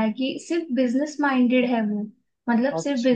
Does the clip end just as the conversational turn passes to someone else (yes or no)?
no